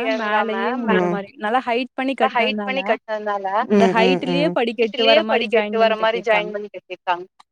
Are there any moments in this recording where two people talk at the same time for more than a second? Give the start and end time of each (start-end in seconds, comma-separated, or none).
3.8-6.5